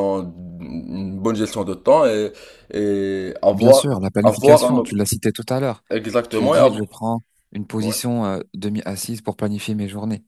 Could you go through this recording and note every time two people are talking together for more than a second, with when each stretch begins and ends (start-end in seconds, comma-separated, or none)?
3.5-5.0